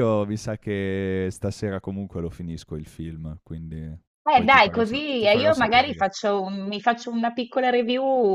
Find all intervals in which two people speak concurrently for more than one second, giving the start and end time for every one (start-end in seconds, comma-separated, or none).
4.3-6.1